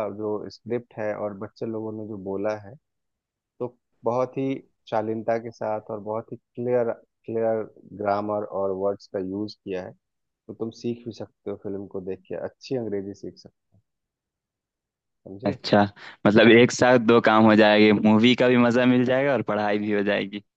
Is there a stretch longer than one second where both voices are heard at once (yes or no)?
no